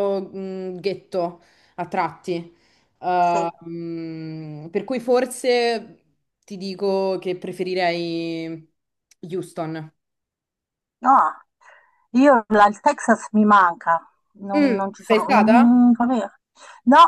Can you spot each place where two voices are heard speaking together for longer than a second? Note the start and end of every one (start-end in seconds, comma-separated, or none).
14.5-15.8